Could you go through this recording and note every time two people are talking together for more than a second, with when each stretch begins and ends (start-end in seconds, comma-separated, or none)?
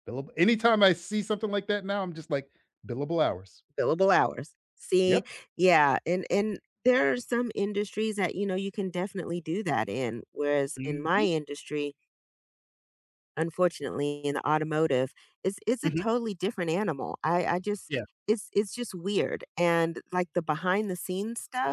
none